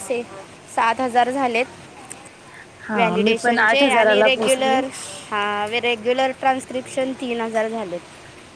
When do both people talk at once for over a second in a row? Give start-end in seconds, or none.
3.0-4.8